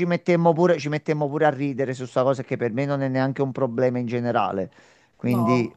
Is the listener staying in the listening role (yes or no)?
yes